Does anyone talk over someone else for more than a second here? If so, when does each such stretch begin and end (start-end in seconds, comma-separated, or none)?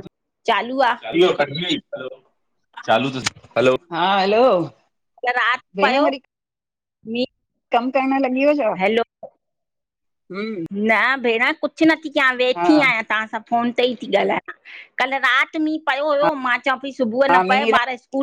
none